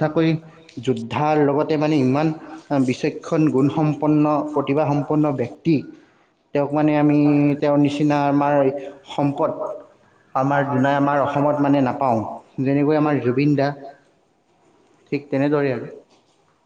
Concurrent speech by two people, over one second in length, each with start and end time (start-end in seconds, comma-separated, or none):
3.5-5.3